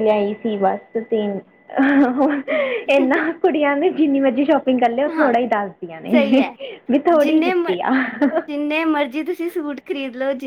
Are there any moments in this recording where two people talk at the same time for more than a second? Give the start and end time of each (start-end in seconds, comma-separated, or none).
none